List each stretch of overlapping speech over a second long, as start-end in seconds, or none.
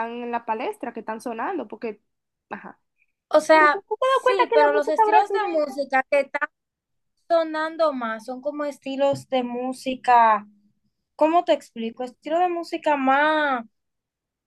3.5-5.8